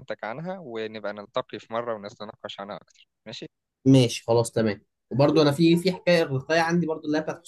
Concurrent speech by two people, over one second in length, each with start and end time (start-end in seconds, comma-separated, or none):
none